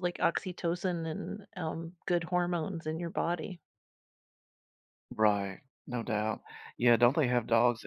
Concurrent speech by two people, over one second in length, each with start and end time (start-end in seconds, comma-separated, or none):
none